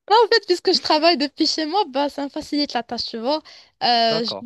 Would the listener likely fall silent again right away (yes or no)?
yes